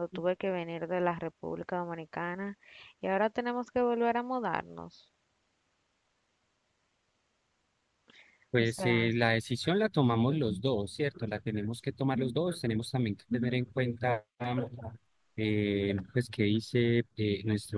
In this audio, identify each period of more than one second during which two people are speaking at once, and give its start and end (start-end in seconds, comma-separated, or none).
none